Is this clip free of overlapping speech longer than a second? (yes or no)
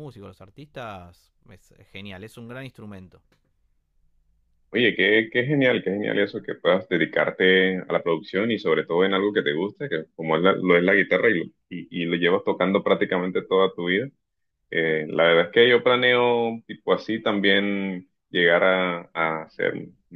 yes